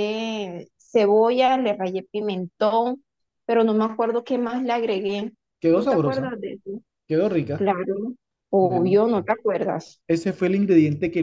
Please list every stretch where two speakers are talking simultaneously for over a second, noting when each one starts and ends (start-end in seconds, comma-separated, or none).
none